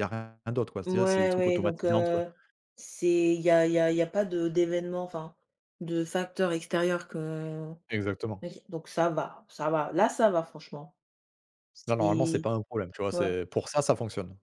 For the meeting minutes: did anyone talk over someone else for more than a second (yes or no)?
yes